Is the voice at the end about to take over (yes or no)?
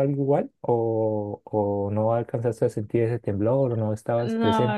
yes